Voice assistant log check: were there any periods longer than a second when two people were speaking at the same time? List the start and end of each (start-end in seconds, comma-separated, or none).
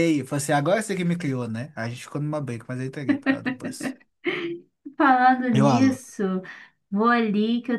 none